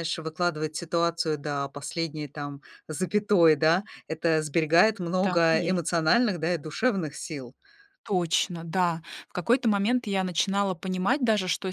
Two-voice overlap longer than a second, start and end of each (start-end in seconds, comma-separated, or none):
none